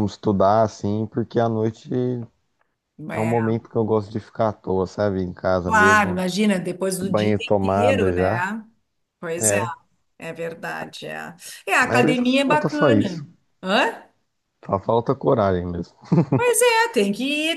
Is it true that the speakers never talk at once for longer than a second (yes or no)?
no